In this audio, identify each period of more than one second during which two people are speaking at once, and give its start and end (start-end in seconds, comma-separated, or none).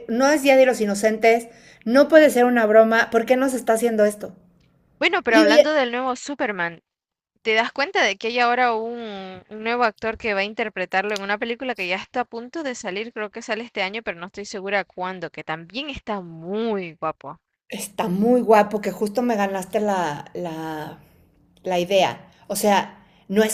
none